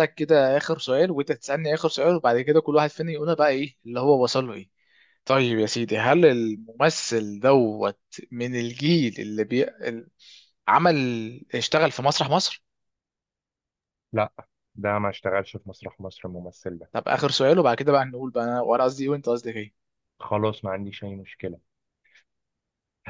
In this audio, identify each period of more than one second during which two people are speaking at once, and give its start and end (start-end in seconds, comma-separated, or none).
none